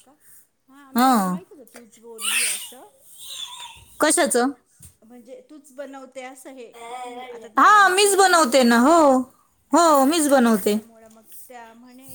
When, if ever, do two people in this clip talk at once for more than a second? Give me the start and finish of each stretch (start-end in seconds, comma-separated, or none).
7.6-9.0